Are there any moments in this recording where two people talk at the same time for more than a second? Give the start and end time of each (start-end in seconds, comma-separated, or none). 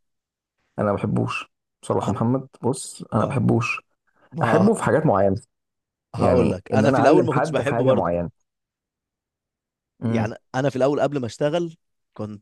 6.2-8.1